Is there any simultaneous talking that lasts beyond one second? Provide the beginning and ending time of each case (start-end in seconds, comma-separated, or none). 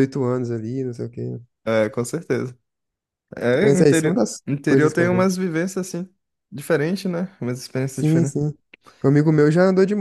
3.6-5.3